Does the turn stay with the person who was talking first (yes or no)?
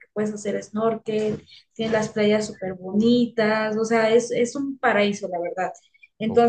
yes